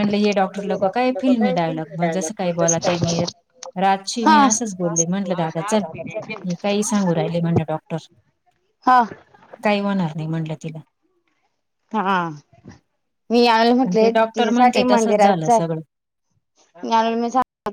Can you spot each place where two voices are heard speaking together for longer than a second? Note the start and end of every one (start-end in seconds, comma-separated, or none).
0.7-3.3, 13.8-15.8